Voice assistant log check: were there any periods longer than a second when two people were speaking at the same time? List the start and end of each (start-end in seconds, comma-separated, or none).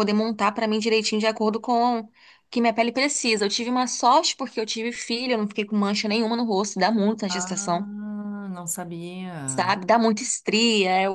none